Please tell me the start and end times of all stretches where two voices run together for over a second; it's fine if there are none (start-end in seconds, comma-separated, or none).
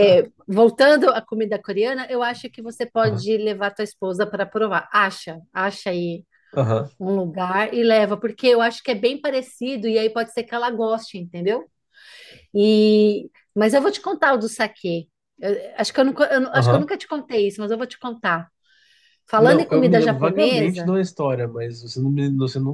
19.4-20.9